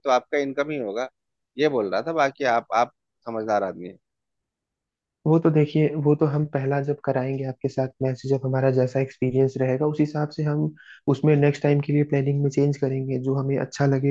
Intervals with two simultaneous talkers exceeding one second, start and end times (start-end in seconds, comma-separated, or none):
none